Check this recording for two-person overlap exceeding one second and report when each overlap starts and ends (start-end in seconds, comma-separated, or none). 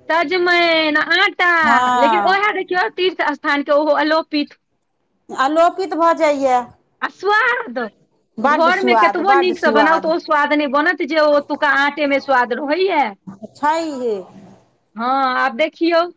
8.6-10.2